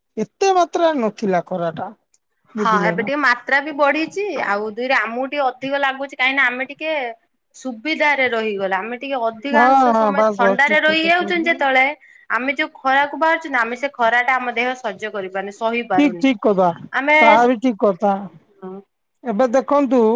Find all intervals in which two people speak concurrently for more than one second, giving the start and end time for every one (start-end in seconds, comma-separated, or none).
9.5-11.6